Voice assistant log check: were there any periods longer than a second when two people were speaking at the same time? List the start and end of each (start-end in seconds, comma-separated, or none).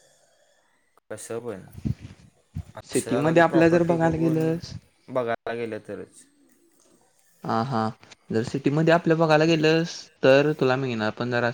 2.9-4.4